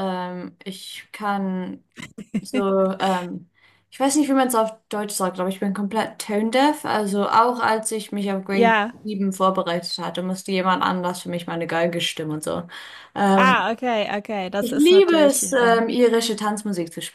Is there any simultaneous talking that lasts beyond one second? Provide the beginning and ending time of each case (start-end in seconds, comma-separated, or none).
14.6-15.8